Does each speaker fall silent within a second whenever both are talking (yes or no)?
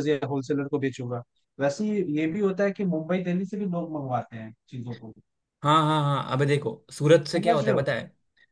yes